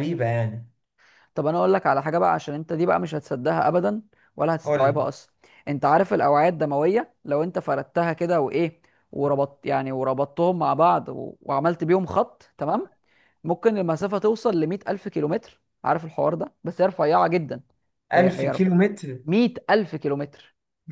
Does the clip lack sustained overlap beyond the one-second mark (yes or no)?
yes